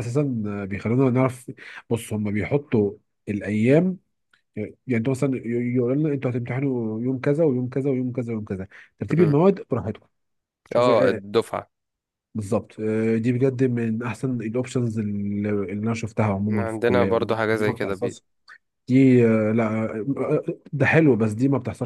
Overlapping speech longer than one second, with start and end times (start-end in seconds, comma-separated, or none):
16.5-17.9